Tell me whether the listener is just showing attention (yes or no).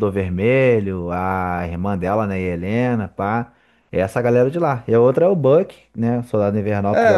no